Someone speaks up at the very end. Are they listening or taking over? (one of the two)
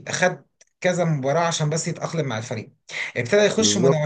listening